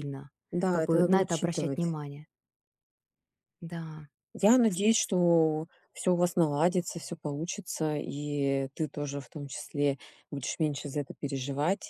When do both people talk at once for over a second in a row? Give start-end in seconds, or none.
0.7-1.9